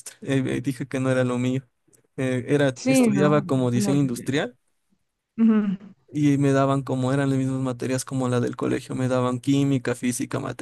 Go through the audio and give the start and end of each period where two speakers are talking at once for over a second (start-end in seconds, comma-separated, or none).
2.8-4.3